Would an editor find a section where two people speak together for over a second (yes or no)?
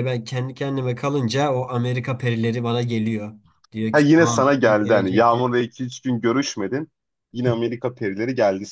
yes